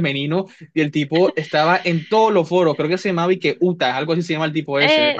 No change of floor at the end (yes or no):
no